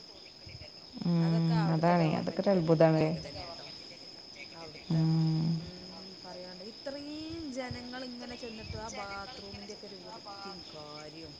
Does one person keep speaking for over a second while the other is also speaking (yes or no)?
yes